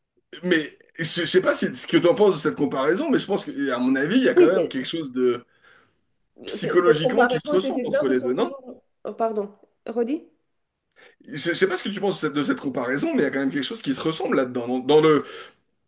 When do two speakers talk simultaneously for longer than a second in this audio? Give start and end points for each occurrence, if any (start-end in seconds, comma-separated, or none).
6.6-8.6